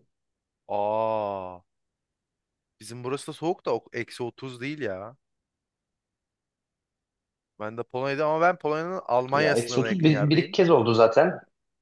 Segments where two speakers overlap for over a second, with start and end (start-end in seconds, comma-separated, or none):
9.3-10.6